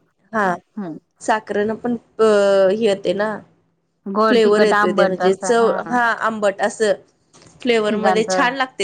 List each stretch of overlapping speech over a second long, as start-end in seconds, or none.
4.3-5.5